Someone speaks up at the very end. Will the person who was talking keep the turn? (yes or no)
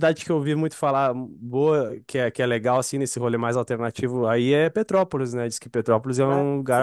no